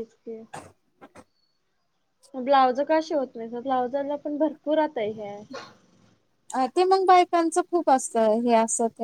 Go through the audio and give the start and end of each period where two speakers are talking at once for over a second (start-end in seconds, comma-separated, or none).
none